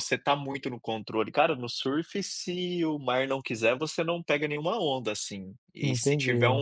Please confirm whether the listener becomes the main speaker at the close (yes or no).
no